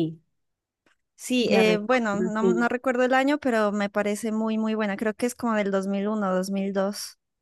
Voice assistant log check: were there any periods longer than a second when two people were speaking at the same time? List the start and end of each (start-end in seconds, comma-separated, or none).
1.4-2.7